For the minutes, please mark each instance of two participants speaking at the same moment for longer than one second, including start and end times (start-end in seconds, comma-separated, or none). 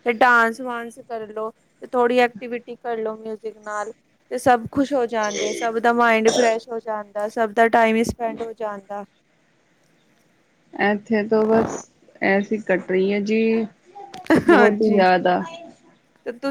none